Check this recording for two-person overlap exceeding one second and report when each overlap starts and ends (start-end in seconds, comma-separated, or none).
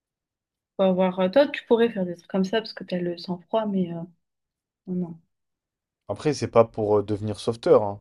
none